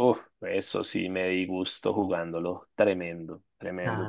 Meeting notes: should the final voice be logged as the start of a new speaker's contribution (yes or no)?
yes